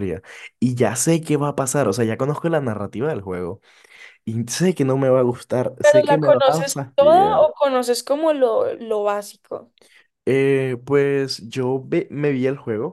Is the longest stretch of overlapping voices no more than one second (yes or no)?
no